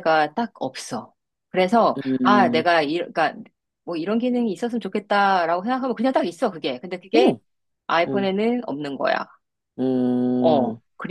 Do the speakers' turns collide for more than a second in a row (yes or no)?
no